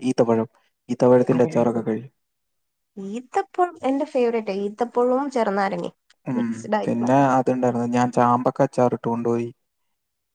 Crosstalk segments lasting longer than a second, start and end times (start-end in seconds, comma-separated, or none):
none